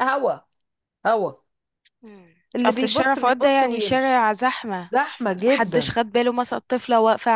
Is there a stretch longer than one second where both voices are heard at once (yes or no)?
yes